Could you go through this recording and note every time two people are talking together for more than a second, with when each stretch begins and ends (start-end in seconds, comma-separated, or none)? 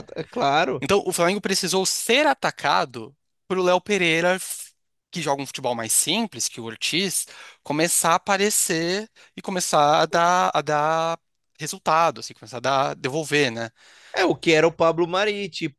none